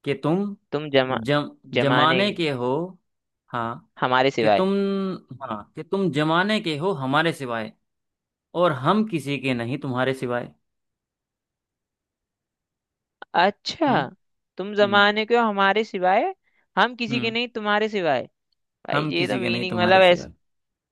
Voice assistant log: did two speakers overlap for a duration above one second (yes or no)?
yes